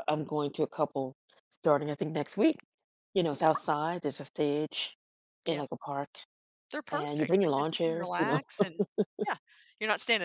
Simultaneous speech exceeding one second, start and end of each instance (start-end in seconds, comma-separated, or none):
6.9-8.4